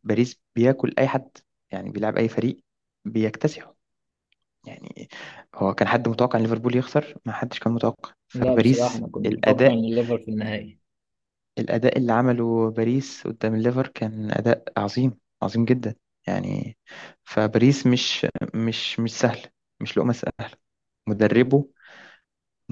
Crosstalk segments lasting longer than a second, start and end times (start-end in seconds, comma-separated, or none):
8.3-9.9